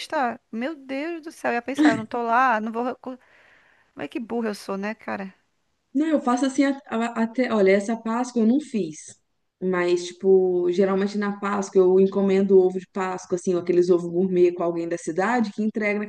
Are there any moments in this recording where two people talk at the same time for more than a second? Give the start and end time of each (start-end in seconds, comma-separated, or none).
none